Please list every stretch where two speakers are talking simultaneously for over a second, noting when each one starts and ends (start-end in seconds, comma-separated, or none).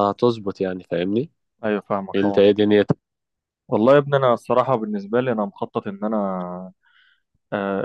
none